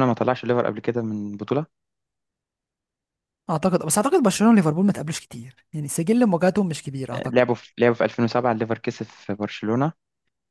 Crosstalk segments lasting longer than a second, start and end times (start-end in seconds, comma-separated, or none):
none